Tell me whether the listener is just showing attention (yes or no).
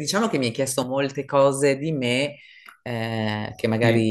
yes